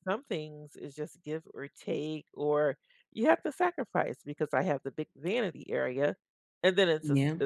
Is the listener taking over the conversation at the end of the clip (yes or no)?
no